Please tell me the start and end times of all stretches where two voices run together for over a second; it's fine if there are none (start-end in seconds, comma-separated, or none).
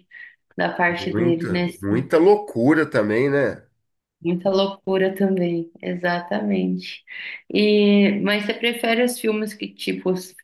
0.9-2.1